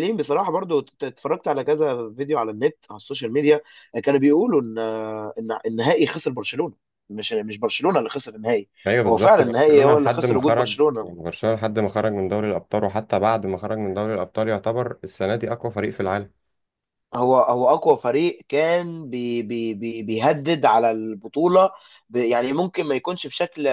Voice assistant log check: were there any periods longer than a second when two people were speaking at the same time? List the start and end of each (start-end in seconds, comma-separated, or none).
9.1-11.1